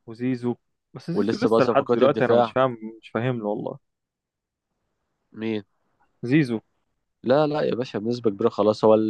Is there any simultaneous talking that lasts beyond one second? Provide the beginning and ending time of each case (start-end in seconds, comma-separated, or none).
1.1-2.5